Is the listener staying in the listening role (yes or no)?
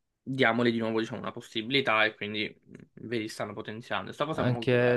no